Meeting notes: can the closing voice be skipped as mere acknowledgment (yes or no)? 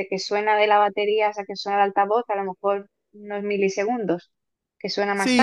no